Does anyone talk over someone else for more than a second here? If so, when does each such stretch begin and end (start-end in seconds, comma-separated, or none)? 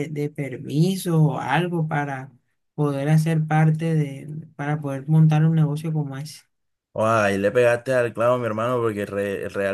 none